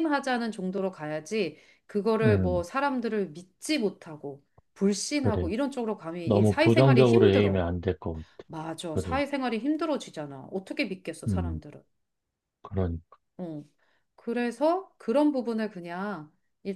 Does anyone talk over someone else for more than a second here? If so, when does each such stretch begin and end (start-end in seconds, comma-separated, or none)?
6.2-7.6